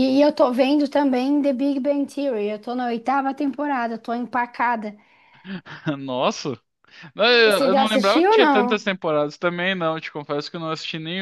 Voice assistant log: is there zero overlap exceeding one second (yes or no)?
no